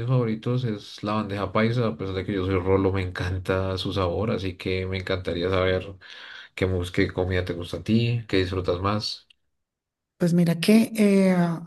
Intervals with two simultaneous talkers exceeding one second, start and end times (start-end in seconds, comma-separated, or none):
none